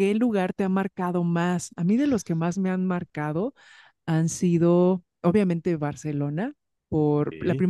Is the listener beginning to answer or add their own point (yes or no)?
no